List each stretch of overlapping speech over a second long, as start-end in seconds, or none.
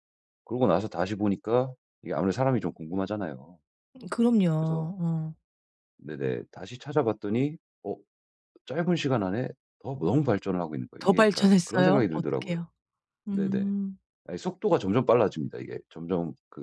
11.0-12.6